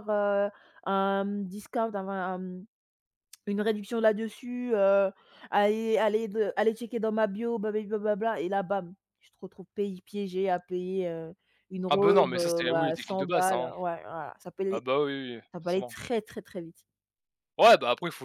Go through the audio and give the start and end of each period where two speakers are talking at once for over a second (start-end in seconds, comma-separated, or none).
11.9-13.7